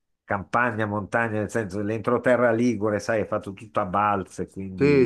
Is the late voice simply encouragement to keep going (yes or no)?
no